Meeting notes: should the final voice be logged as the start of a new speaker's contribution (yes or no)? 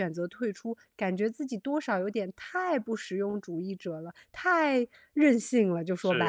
yes